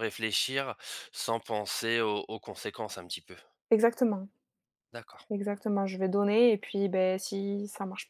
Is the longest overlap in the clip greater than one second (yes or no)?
no